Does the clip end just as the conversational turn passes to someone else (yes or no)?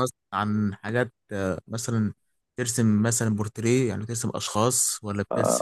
yes